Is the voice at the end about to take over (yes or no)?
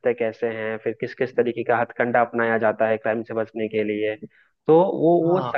no